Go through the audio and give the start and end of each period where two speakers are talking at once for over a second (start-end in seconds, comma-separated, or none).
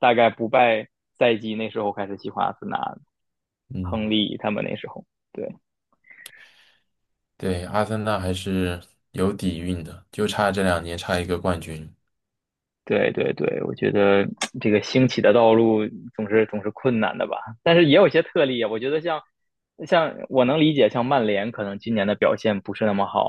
none